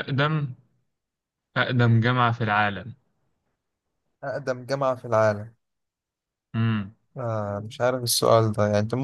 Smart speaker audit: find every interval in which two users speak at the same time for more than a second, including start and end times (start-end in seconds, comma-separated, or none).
none